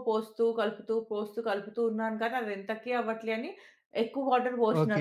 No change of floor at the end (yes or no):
no